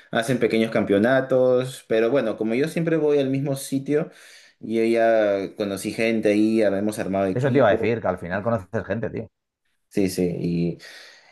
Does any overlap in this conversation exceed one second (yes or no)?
no